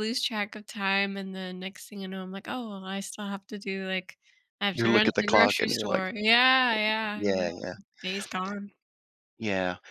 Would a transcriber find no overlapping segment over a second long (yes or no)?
no